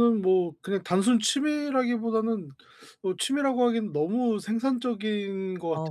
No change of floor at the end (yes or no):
no